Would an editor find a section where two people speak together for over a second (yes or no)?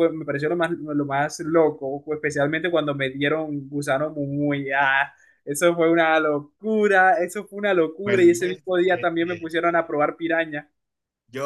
yes